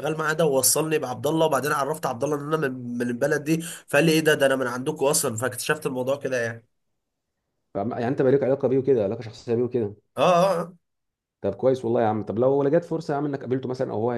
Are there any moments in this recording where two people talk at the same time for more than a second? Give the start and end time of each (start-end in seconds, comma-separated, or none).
none